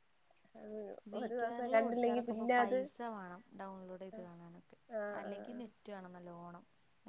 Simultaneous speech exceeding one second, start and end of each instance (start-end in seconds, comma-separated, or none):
1.2-2.8